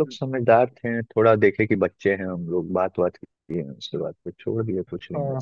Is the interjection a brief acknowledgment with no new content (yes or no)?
no